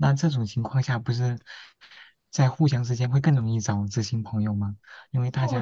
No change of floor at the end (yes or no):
no